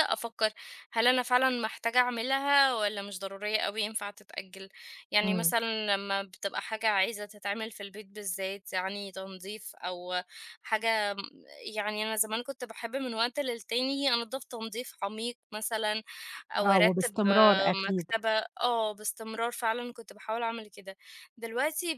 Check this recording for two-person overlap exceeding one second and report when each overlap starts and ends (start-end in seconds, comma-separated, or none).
16.6-18.1